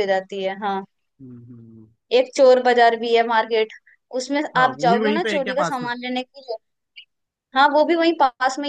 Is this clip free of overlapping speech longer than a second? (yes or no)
no